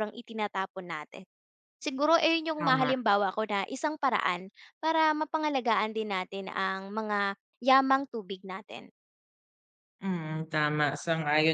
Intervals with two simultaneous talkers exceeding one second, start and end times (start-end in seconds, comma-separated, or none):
none